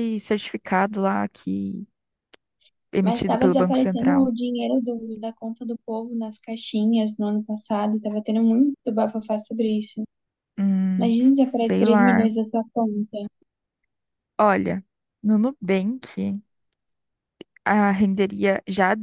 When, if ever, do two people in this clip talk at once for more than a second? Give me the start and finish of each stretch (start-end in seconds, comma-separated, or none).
3.0-4.3, 11.0-12.3